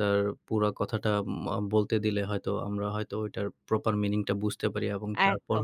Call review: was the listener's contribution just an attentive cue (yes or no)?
no